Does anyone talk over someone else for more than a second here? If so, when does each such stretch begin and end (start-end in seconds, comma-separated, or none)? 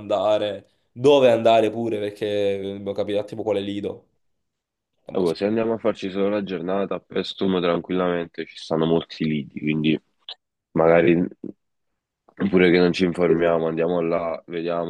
none